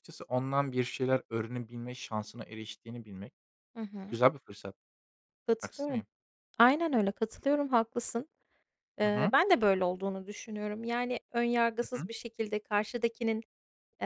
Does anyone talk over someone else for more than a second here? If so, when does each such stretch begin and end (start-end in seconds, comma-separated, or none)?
none